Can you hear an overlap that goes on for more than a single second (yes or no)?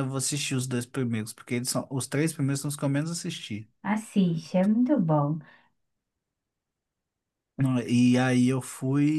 no